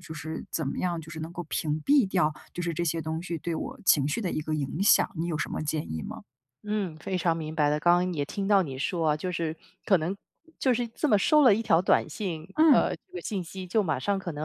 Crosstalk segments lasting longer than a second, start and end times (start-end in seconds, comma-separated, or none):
none